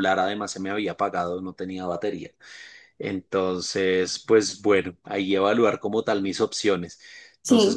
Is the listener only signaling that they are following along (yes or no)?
yes